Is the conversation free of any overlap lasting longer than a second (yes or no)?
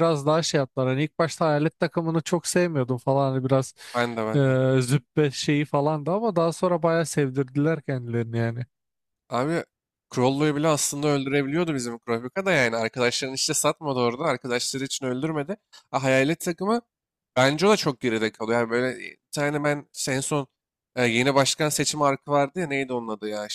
yes